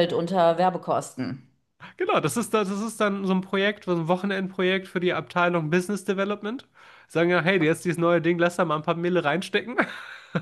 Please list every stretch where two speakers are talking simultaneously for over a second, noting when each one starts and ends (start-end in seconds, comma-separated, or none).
none